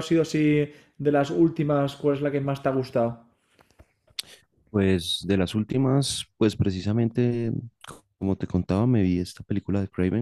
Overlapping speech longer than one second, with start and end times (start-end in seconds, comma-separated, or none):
none